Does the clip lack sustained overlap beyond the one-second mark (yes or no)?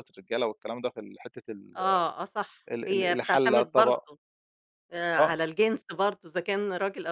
no